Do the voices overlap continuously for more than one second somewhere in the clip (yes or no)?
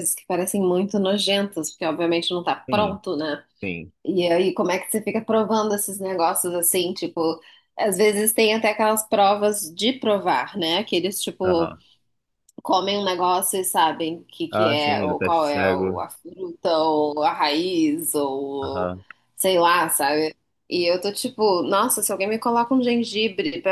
yes